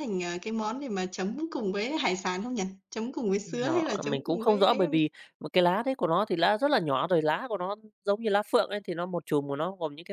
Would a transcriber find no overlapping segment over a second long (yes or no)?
no